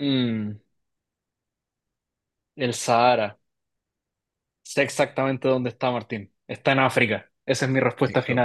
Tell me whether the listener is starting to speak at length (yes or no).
yes